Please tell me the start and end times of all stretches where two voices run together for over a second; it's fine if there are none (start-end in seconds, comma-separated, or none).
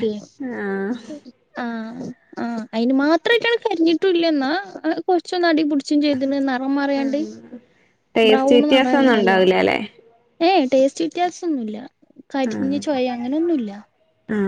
8.3-9.5